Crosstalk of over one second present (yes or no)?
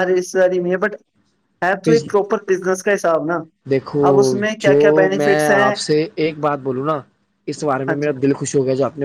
yes